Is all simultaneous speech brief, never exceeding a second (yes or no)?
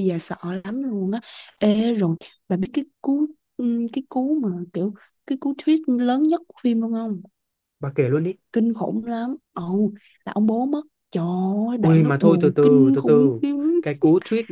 no